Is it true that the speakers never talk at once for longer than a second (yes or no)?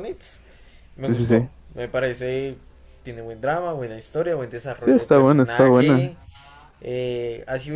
no